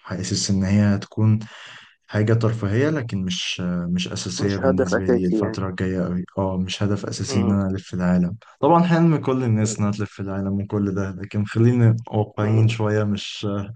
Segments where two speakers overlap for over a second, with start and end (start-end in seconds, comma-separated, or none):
4.4-5.6